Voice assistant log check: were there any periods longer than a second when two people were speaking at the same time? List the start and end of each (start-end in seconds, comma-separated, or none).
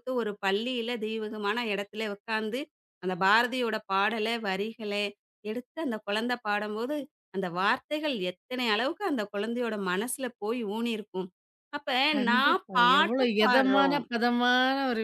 12.3-14.0